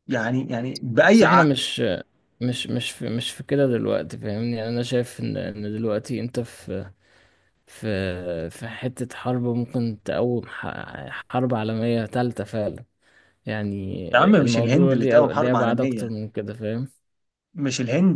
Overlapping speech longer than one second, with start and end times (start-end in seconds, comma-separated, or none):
14.4-16.0